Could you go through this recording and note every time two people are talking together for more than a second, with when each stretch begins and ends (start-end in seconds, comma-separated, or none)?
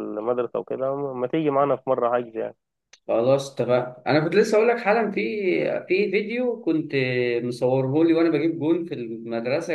none